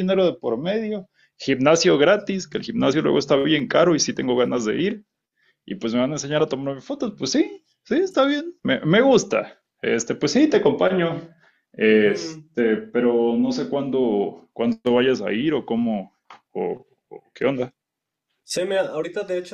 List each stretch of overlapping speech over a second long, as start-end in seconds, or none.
none